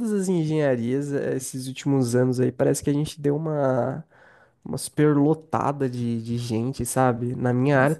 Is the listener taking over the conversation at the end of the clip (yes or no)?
no